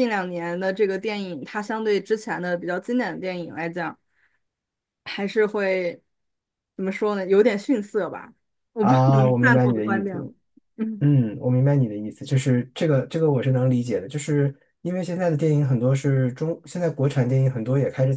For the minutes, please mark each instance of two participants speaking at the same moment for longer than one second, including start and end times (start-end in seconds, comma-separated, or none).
8.8-10.3